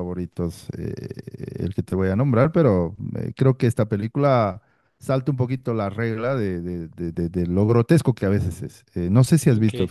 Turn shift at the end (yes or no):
no